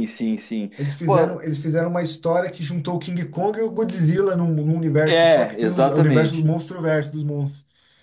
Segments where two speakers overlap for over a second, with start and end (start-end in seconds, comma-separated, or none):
5.0-6.5